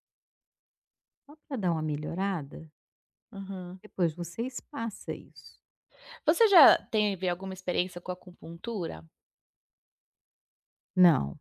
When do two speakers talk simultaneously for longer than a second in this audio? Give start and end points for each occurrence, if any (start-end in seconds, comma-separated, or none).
none